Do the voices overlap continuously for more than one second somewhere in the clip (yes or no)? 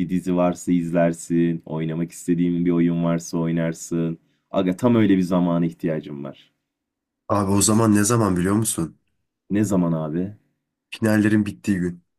no